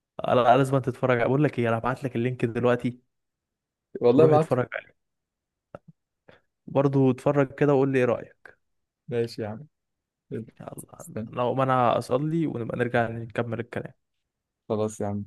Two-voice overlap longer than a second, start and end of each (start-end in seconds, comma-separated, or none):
none